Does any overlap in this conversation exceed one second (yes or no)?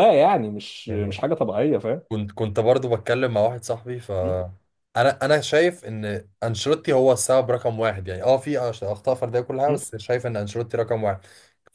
no